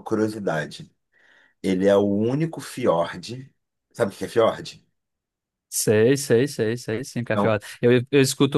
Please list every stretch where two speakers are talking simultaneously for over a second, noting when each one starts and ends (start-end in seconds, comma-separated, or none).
none